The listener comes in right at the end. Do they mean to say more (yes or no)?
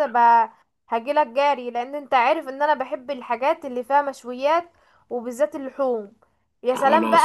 no